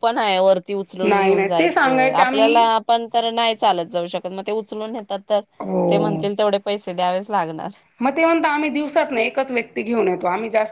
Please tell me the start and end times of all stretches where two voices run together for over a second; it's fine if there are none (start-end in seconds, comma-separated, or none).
1.0-2.7